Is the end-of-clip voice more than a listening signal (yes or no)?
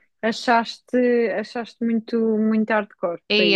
yes